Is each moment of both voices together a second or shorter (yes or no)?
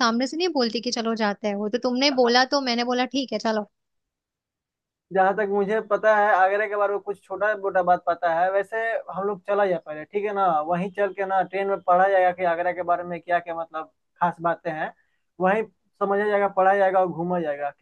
yes